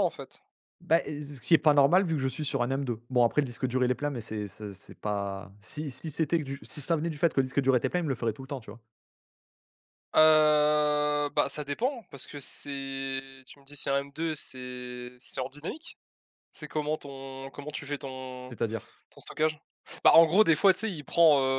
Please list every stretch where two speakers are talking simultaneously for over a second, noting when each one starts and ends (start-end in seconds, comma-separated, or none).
none